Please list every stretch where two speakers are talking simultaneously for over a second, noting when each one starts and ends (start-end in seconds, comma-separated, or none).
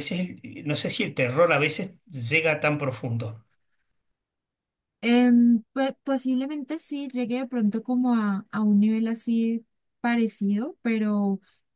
none